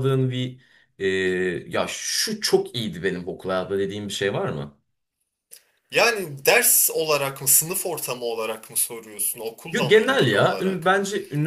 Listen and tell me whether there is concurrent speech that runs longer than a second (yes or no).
yes